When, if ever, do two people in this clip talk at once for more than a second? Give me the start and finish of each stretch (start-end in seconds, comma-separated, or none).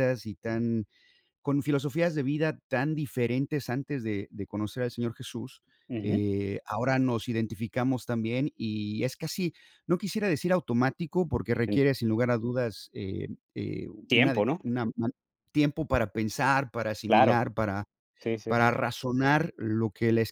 none